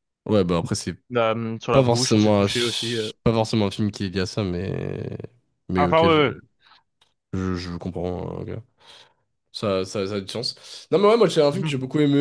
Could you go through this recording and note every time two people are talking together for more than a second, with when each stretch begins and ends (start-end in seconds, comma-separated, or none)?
1.7-3.1